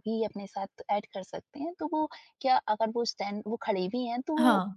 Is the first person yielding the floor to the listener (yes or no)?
no